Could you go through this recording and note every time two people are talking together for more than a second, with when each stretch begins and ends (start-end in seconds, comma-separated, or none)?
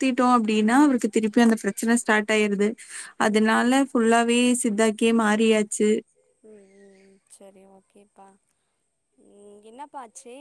none